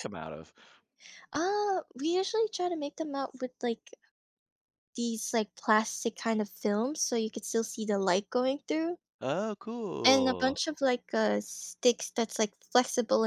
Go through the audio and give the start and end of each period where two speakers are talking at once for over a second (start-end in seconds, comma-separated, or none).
none